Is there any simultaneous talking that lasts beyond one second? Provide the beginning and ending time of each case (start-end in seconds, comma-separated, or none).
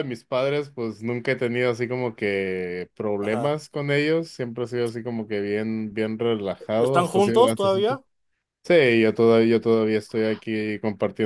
6.8-8.0